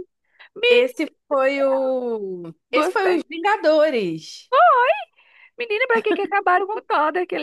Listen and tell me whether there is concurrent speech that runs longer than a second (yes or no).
no